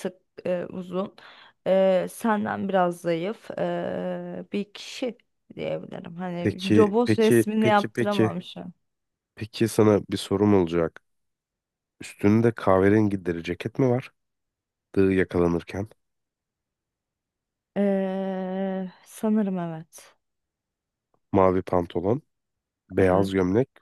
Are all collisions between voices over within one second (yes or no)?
no